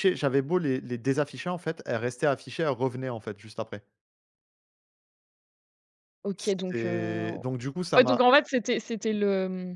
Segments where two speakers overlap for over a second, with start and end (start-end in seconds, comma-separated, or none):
none